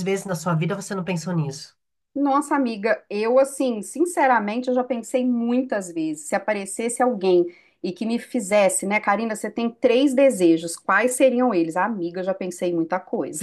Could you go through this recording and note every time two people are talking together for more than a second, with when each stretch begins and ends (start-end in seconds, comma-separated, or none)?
none